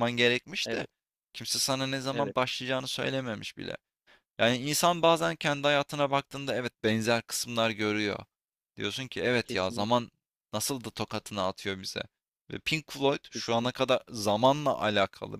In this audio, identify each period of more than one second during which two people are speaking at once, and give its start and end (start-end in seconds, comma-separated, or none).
none